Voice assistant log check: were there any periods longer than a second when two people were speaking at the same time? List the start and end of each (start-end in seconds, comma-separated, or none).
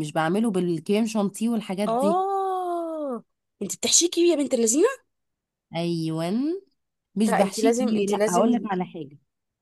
7.3-8.7